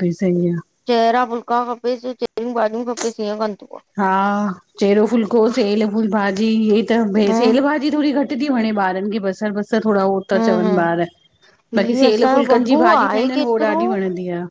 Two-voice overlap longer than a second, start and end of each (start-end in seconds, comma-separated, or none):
11.8-13.8